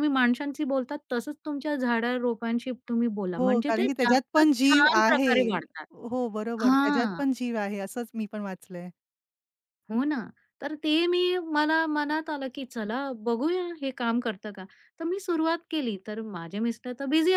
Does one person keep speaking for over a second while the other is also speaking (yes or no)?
yes